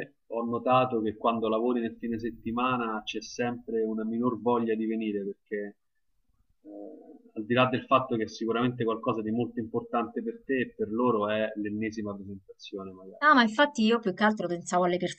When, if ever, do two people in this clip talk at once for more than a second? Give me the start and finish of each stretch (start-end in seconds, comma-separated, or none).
none